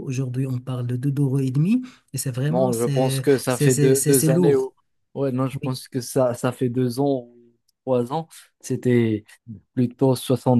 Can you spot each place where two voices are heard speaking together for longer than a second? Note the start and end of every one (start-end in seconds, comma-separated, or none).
2.5-4.7